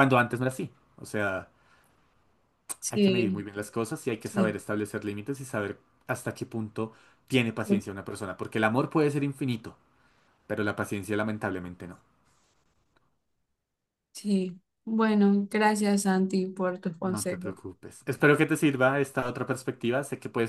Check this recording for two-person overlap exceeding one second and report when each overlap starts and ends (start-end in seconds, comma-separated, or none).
none